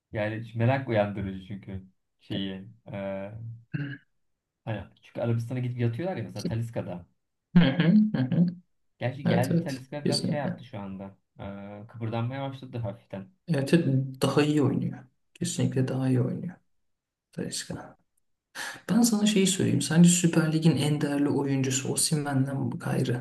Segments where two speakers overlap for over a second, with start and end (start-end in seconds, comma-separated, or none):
9.2-10.6